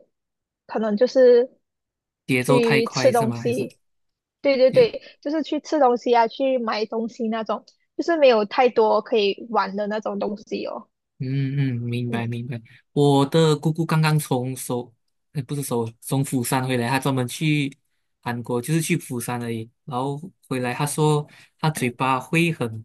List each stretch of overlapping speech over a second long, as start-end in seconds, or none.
2.4-3.7